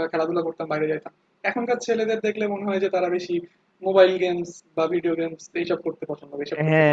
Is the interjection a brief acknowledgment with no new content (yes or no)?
no